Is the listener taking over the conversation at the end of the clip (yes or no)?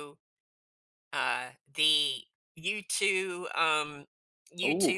no